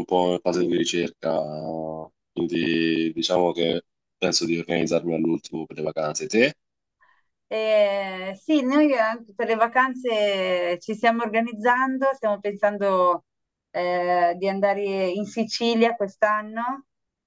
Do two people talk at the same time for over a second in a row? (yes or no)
no